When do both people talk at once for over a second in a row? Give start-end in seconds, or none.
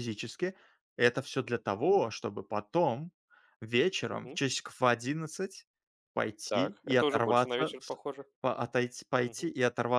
6.5-8.0